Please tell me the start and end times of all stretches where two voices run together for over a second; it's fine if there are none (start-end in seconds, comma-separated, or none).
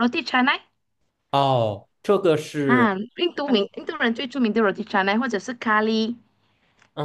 none